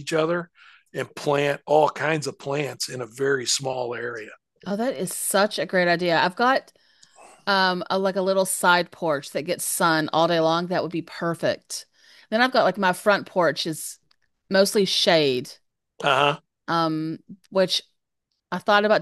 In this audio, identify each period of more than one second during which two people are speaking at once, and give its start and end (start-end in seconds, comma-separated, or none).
none